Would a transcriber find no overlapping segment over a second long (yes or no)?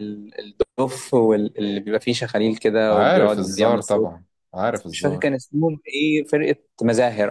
no